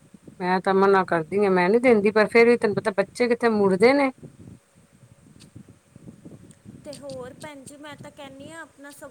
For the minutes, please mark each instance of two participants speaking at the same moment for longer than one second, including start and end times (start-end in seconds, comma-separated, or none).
none